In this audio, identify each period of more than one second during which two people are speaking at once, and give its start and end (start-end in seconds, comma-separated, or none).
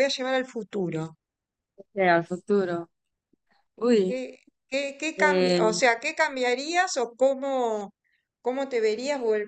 none